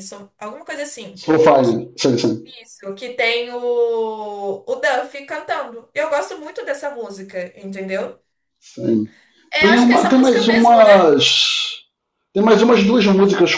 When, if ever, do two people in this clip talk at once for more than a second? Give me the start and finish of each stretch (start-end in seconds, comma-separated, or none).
9.6-11.1